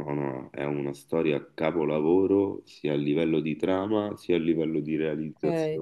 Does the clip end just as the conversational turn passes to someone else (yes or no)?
yes